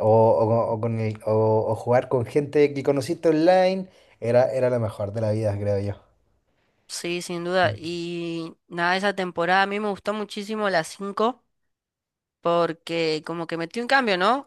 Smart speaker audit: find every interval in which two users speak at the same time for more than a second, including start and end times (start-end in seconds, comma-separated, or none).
none